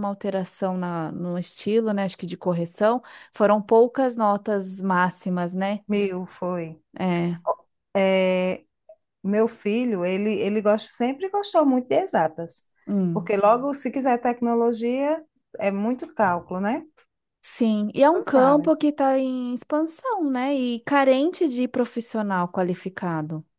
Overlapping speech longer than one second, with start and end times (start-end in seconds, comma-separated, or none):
none